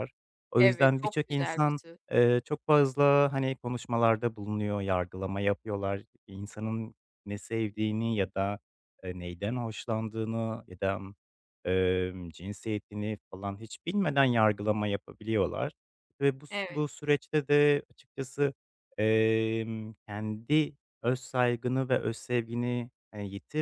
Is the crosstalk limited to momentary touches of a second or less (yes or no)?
no